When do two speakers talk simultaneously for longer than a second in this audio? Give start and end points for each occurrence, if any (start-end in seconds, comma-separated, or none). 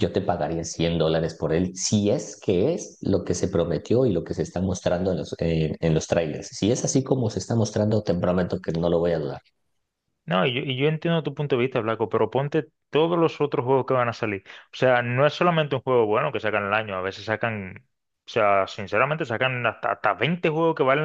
none